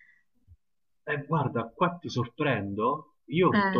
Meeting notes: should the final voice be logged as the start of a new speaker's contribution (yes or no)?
no